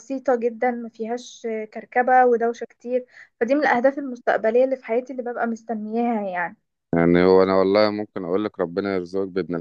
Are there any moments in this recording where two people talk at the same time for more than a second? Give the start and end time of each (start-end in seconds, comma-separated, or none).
none